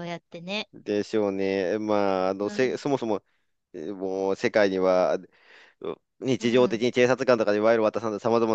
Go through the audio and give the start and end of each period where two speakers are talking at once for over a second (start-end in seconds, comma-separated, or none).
none